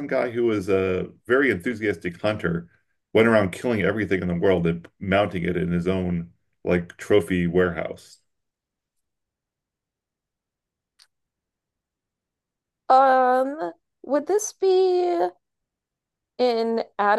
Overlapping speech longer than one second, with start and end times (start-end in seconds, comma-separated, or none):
none